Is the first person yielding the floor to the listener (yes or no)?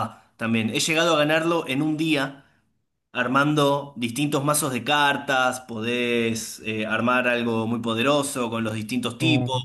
no